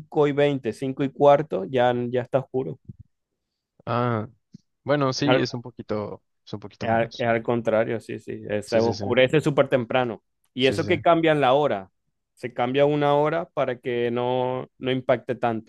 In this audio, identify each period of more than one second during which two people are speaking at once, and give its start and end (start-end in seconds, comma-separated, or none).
none